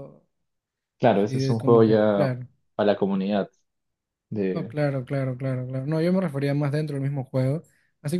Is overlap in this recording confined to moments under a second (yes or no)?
no